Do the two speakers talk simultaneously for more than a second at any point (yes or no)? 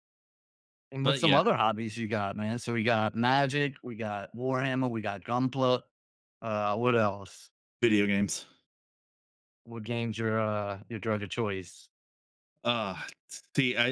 no